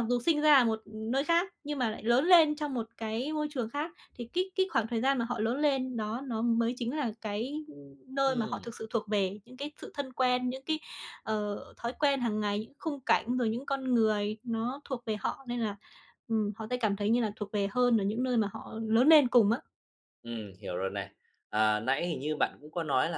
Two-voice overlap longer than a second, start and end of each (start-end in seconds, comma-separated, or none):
none